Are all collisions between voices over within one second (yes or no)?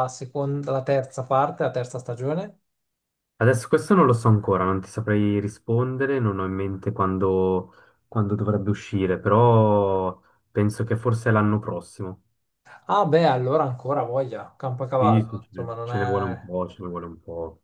no